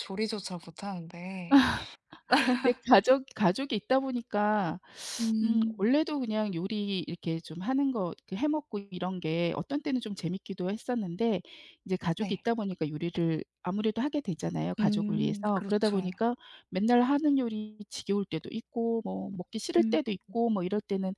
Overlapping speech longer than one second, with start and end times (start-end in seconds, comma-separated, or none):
14.8-16.1